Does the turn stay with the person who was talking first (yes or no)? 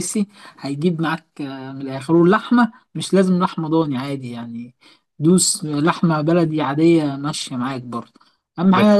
yes